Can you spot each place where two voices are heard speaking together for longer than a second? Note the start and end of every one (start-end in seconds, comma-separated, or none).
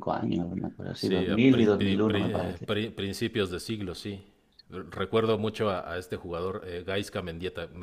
0.9-2.7